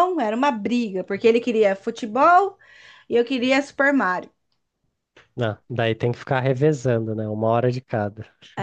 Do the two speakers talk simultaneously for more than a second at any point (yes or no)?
no